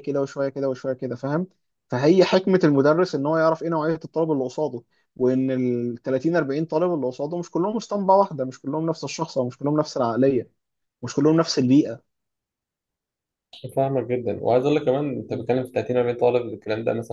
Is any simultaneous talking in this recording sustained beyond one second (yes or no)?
no